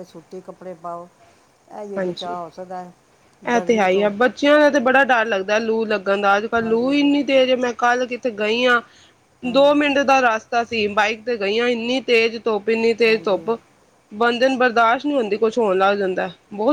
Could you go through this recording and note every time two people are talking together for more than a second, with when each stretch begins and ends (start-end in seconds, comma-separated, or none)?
none